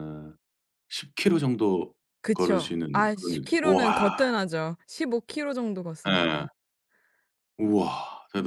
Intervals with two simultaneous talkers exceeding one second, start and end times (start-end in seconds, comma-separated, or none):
2.3-4.2